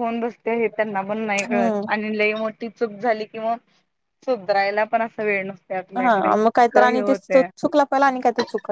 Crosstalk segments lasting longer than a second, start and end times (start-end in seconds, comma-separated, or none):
none